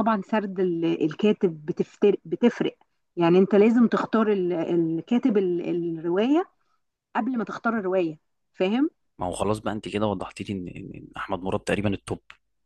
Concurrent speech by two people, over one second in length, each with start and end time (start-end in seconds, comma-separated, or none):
none